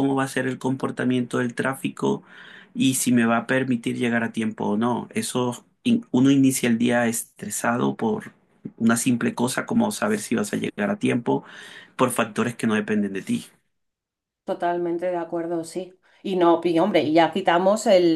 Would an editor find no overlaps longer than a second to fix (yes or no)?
yes